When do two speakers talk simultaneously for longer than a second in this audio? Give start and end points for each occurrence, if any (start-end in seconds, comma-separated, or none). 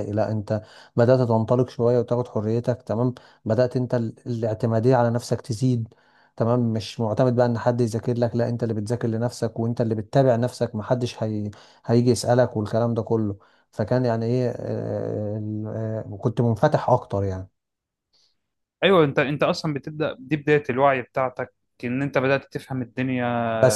none